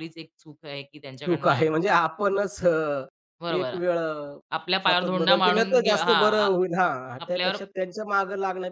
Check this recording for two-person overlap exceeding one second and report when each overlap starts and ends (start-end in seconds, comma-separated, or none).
4.8-6.5